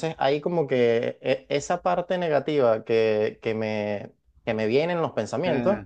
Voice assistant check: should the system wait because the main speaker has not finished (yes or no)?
yes